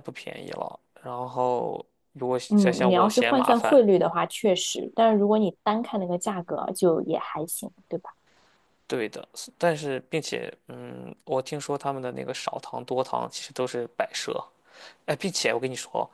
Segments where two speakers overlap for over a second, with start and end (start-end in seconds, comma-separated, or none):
2.5-3.8